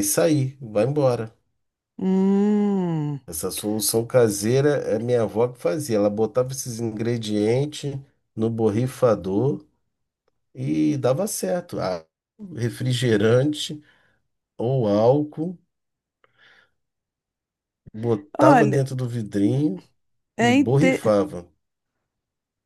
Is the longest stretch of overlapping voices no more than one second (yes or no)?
yes